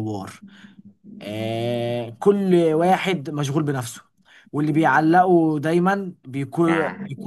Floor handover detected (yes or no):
no